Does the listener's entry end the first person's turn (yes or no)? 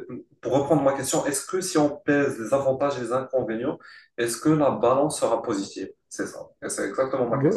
yes